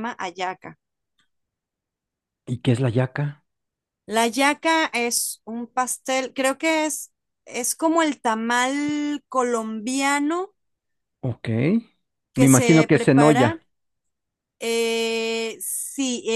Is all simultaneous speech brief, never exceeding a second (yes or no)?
no